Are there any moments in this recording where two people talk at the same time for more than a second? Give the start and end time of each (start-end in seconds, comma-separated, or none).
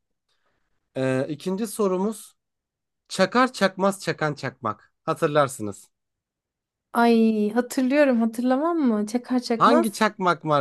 none